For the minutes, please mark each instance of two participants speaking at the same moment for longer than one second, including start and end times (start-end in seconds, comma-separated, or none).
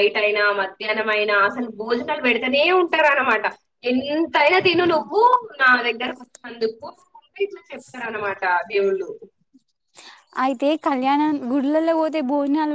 none